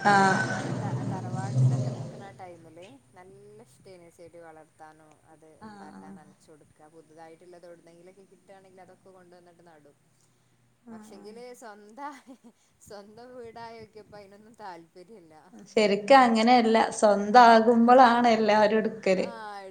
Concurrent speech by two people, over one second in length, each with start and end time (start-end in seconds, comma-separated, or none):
none